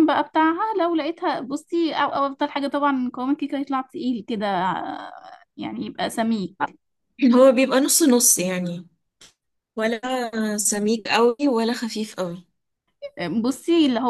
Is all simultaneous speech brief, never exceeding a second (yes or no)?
yes